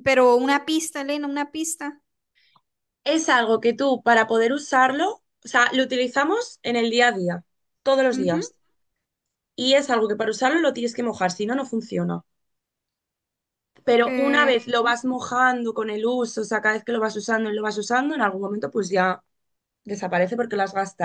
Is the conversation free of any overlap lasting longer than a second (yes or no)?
yes